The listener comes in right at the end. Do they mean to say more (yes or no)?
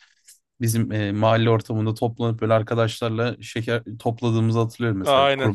yes